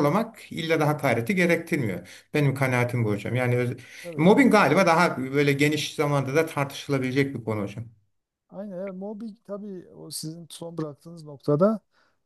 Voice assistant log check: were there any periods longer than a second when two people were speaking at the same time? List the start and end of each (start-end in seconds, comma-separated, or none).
none